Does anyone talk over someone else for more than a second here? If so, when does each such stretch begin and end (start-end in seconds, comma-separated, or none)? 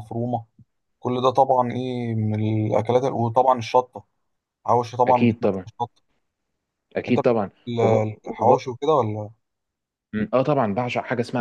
7.1-8.6